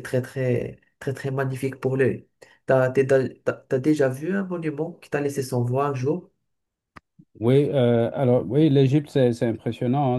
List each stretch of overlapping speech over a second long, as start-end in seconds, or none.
none